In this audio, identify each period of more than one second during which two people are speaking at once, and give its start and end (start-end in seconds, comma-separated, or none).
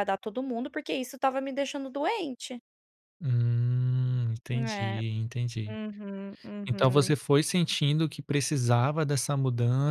none